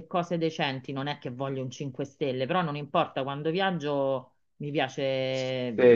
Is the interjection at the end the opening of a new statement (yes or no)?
yes